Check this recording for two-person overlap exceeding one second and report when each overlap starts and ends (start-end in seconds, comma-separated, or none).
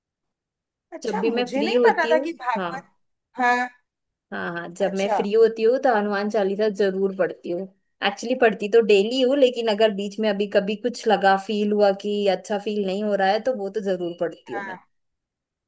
1.0-2.9